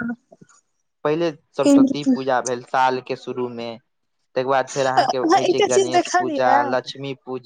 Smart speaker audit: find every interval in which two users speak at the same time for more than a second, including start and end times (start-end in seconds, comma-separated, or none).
5.0-6.5